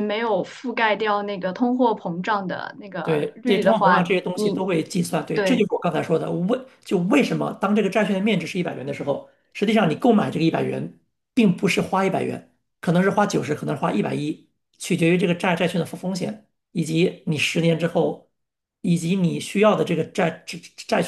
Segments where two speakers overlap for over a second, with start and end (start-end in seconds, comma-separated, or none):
3.0-4.7